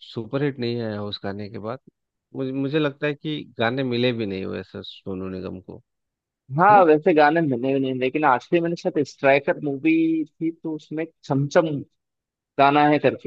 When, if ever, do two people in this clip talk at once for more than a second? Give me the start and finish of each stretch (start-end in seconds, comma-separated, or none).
none